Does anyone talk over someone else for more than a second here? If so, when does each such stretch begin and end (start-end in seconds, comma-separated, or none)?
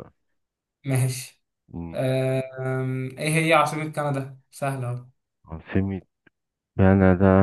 none